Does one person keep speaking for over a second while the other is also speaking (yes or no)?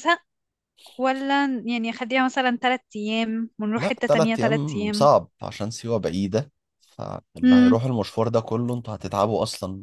yes